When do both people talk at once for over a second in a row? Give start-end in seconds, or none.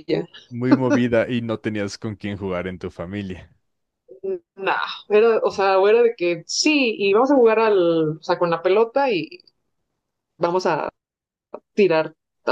none